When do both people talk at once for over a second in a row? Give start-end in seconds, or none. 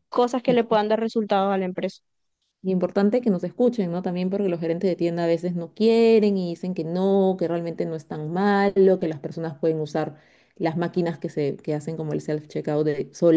none